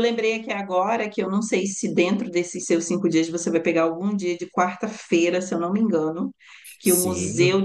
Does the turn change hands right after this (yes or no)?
no